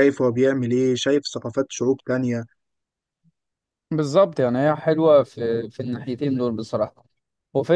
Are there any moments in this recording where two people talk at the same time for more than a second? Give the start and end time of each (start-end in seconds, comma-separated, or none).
none